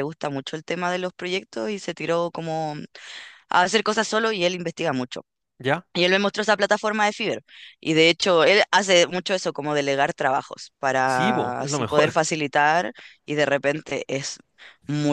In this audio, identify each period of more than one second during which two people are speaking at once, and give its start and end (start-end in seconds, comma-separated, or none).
11.0-12.3